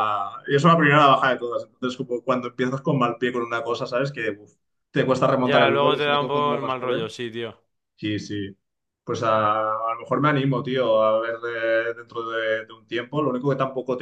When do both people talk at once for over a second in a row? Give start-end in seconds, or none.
5.4-7.1